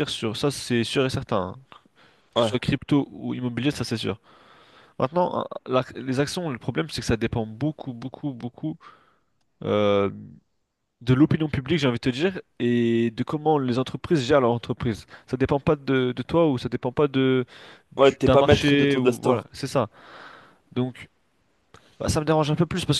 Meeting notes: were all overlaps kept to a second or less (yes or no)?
no